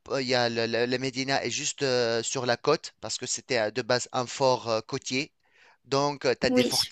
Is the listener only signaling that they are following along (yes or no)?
yes